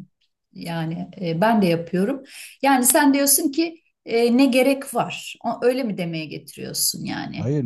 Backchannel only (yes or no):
no